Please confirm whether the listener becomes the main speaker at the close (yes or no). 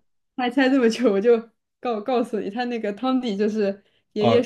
no